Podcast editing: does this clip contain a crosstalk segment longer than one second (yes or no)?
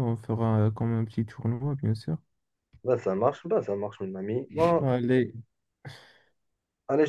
no